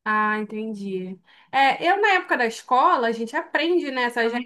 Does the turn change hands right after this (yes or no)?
no